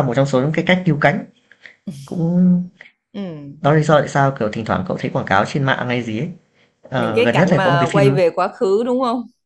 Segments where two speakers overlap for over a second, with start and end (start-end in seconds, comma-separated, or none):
7.0-8.2